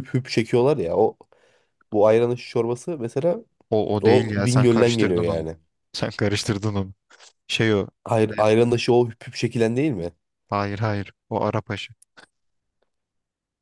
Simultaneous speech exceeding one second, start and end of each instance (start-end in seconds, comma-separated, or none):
4.0-5.5